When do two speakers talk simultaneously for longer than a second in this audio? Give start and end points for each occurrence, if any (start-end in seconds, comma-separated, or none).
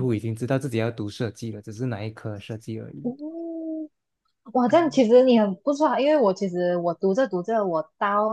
none